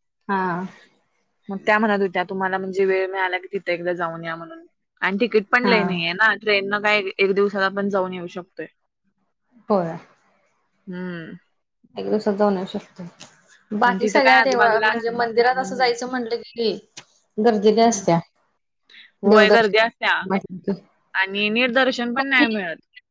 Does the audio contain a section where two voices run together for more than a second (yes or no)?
yes